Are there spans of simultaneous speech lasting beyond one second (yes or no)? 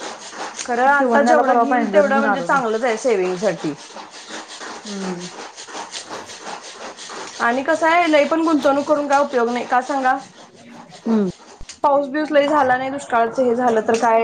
yes